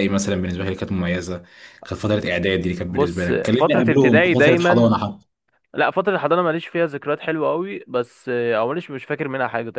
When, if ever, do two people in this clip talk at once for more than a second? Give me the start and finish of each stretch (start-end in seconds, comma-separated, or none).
2.9-5.0